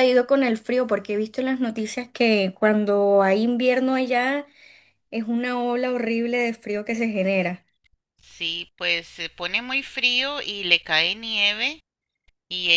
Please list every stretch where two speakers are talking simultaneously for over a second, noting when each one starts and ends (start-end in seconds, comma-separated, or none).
none